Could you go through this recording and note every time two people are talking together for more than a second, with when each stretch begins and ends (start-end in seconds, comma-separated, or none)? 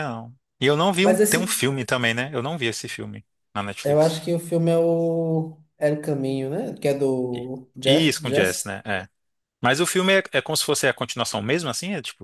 7.3-8.8